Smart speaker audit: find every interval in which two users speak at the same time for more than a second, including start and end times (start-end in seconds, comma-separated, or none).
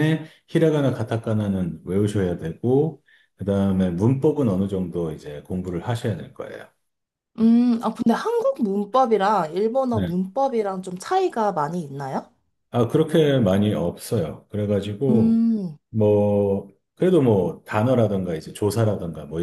none